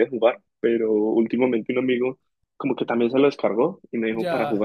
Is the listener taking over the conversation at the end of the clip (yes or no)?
no